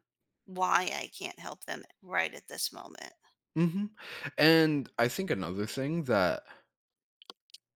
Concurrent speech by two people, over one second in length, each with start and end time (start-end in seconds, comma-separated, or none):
none